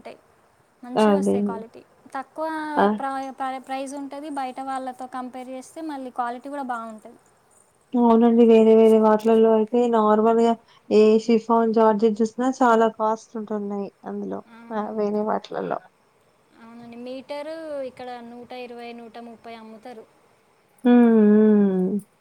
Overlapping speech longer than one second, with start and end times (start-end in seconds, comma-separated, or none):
none